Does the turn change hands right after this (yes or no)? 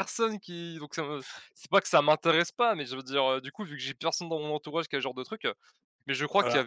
no